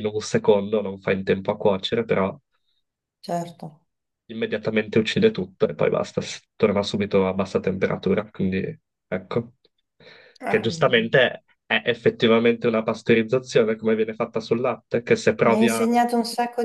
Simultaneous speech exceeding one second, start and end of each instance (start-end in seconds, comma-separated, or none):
none